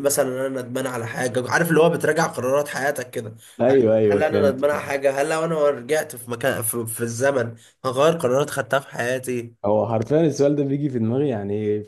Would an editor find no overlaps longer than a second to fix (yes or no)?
no